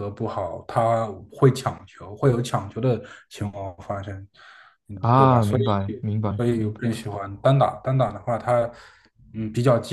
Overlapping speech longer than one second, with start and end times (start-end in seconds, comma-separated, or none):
5.0-6.8